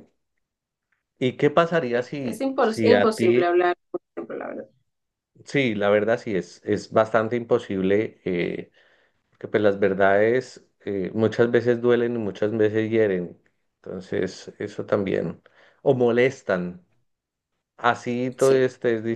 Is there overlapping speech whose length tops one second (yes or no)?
yes